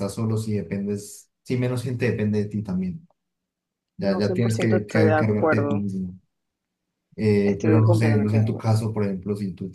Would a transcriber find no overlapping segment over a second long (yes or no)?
no